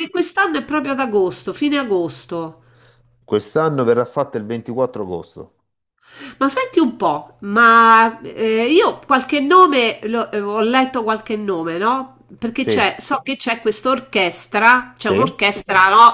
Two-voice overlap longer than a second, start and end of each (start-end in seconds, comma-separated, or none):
none